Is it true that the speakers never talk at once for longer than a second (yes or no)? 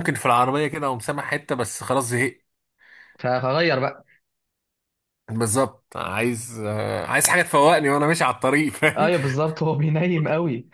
yes